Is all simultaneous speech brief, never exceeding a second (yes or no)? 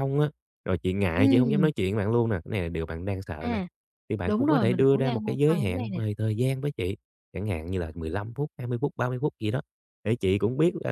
no